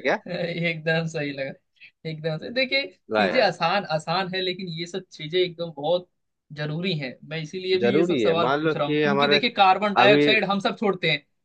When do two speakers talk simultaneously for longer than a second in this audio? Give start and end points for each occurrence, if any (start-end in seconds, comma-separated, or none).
7.8-9.4